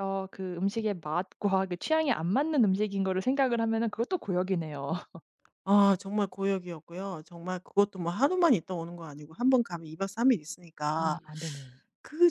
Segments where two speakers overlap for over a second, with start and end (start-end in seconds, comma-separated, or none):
none